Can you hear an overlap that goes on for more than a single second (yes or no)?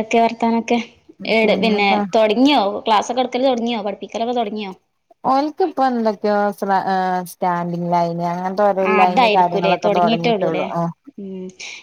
yes